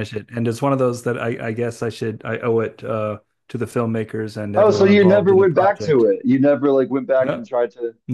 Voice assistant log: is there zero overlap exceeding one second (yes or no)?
no